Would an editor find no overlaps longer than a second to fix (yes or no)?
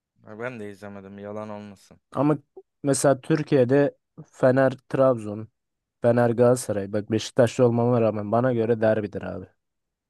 yes